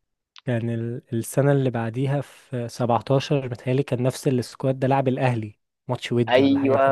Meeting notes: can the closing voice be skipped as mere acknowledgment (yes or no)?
no